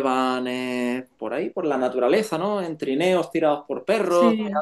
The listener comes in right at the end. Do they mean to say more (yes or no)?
no